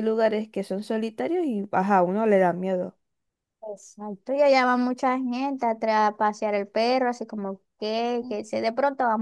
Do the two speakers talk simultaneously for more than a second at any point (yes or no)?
no